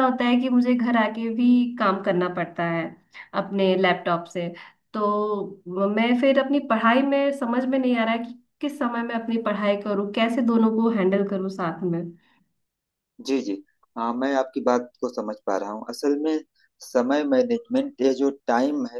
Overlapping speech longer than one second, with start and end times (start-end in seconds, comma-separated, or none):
none